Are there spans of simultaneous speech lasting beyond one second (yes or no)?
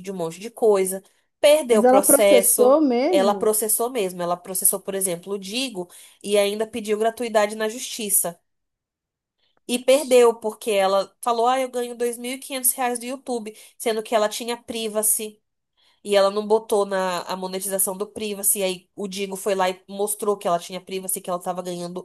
yes